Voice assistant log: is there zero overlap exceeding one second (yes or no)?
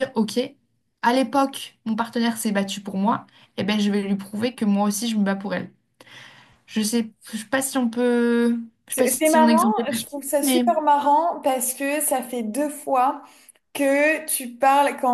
no